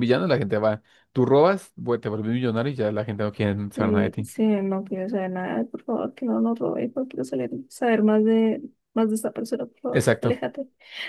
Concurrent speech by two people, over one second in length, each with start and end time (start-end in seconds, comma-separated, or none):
none